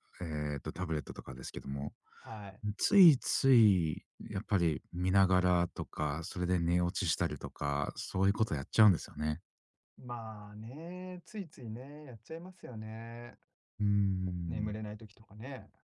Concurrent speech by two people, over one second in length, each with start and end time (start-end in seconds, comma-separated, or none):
none